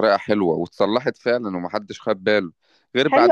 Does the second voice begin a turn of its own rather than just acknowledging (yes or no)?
yes